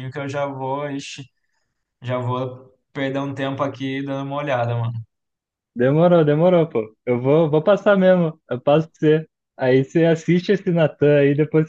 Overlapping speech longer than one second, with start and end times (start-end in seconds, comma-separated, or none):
none